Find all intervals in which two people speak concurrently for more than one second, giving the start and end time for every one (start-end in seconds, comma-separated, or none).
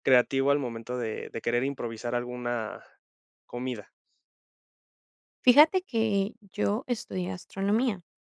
none